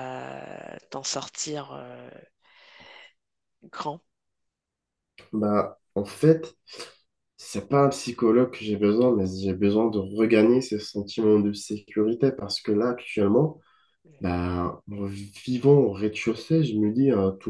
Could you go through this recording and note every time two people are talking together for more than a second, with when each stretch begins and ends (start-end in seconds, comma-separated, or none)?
none